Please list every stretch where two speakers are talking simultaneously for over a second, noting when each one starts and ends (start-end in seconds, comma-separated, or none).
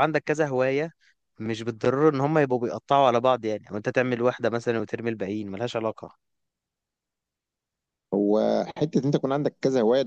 none